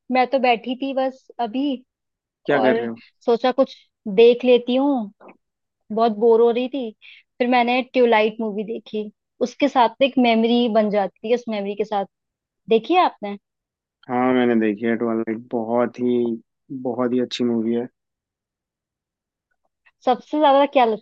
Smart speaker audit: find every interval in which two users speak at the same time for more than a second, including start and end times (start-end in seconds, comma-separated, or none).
none